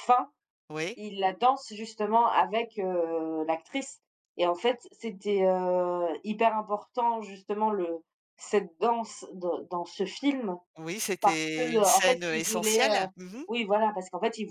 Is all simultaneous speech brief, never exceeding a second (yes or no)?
no